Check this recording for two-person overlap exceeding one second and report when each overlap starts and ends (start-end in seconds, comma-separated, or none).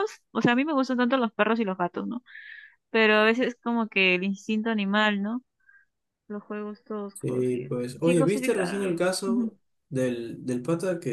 7.1-9.5